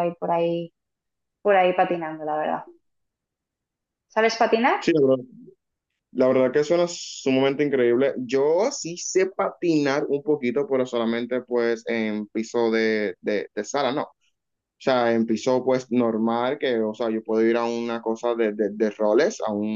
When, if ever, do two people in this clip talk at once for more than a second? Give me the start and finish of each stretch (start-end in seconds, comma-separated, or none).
none